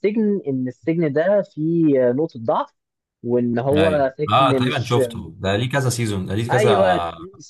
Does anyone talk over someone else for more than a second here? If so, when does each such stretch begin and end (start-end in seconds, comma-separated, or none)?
3.7-5.0